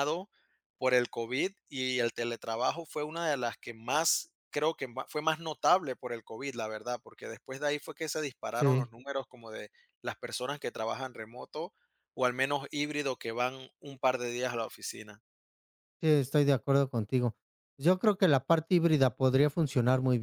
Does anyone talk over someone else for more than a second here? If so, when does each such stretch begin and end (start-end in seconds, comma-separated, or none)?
none